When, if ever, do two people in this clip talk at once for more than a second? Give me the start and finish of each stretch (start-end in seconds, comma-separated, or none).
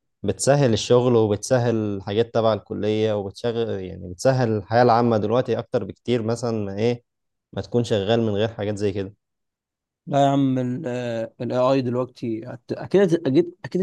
none